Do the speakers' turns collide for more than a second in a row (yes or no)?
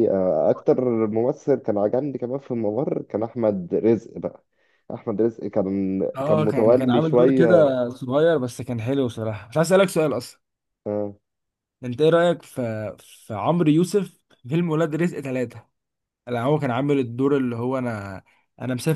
yes